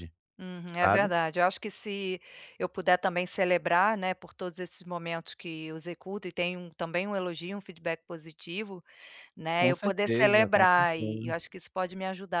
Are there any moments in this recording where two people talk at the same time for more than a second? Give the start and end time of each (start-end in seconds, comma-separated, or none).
9.6-11.3